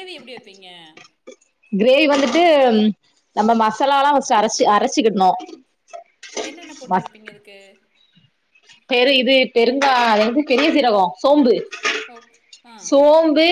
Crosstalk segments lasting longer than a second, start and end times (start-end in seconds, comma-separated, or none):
none